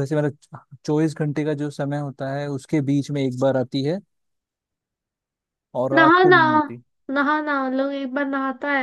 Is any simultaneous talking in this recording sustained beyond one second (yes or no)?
no